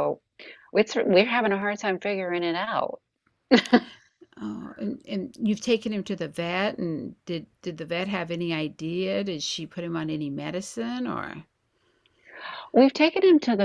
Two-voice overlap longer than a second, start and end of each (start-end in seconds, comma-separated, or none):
none